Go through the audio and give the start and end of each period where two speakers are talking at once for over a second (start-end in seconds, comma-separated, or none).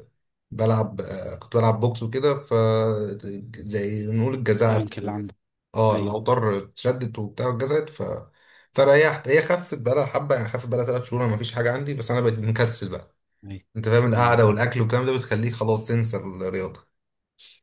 none